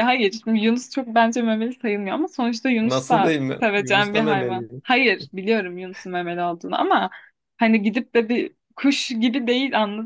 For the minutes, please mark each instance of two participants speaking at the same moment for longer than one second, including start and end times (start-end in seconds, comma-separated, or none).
2.8-4.8